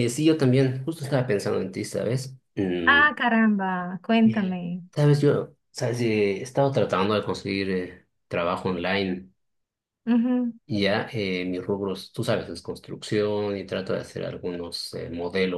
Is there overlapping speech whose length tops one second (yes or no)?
no